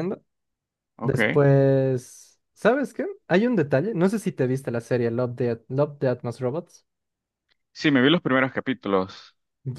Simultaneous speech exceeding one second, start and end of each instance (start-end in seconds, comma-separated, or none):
none